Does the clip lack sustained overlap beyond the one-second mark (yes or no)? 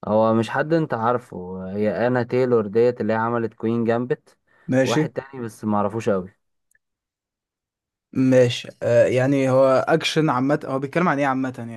yes